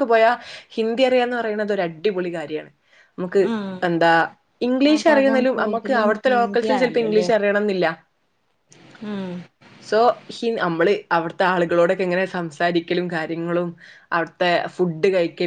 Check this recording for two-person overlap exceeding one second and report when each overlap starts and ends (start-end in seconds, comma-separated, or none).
4.9-7.3